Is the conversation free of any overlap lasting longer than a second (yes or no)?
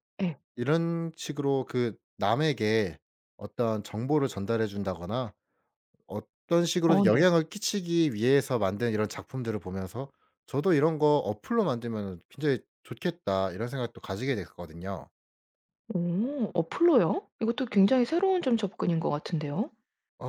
yes